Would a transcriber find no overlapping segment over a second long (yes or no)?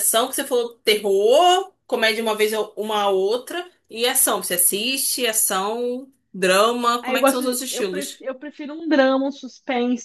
no